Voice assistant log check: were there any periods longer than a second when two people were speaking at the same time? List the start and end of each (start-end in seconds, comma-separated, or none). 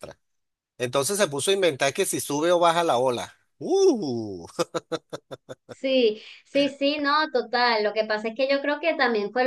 none